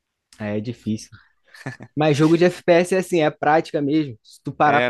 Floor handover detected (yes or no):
no